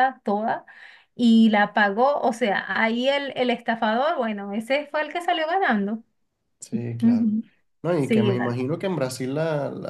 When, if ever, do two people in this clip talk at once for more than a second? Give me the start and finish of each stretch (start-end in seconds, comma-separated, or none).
none